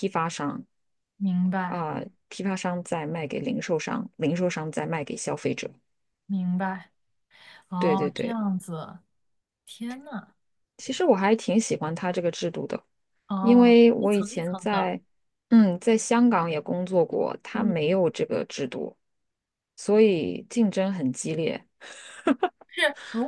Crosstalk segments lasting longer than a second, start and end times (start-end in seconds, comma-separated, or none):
13.4-14.9